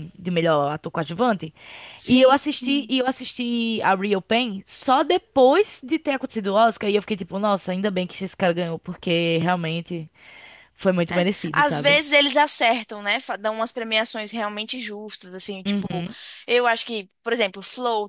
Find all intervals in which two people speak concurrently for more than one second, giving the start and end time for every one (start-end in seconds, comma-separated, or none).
none